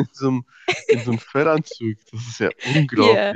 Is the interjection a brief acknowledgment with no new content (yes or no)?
no